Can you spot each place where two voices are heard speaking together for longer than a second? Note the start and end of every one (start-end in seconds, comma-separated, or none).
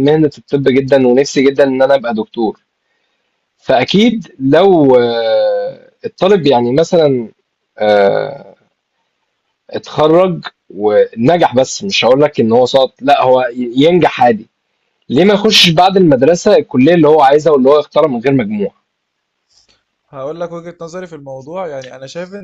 none